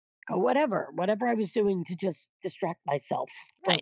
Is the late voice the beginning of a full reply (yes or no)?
yes